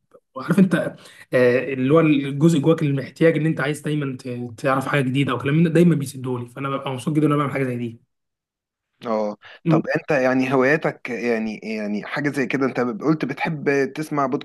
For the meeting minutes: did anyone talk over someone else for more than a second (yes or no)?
no